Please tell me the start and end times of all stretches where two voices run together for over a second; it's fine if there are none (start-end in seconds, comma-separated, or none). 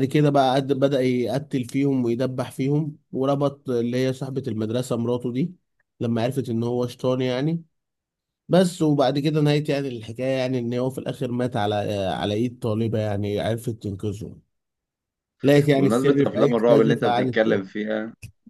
15.8-17.5